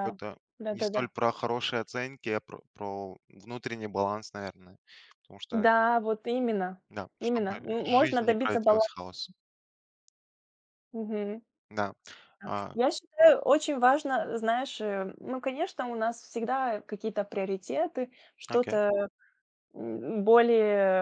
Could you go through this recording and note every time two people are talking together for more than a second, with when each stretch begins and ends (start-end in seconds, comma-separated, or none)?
7.2-8.9